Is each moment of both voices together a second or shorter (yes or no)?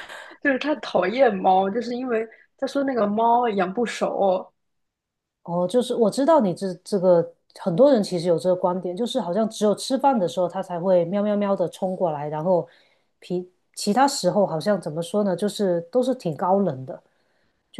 yes